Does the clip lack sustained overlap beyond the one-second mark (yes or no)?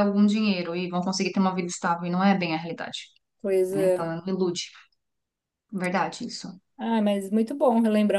yes